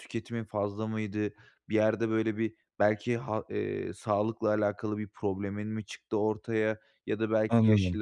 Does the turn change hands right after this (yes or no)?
no